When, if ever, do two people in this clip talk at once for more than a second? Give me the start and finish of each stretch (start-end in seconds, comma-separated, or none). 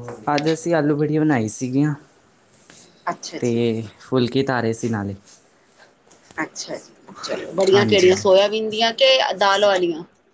none